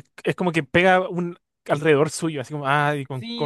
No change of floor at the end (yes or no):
no